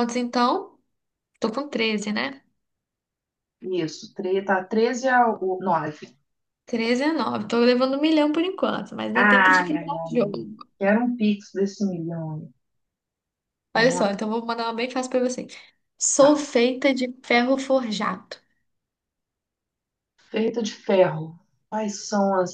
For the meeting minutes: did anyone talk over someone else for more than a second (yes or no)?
yes